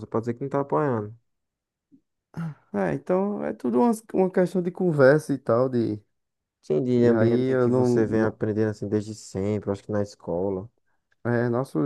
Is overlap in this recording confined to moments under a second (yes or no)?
no